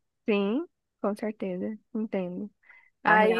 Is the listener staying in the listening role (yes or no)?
no